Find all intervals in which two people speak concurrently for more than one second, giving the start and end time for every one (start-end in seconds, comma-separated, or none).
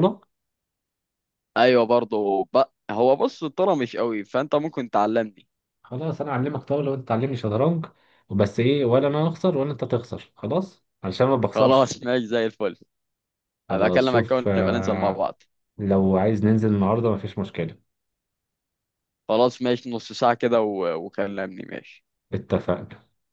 13.7-15.3